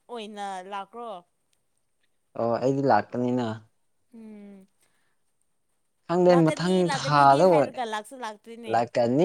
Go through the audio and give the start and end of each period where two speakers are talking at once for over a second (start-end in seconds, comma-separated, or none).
6.3-7.8